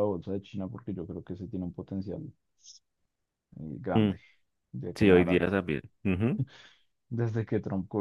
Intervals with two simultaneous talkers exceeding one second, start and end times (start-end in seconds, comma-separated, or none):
none